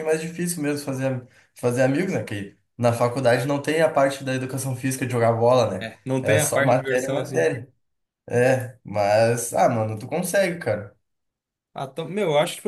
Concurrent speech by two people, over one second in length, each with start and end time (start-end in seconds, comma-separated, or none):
5.8-7.5